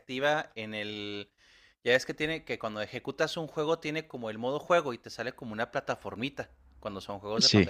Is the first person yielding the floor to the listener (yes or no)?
no